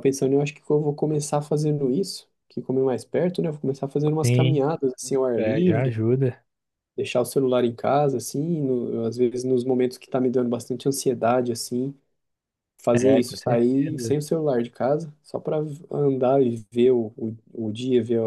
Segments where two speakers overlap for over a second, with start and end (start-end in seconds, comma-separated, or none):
12.9-14.2